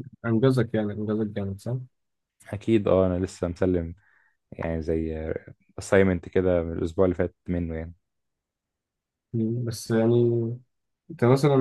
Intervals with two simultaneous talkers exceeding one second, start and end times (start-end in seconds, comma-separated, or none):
none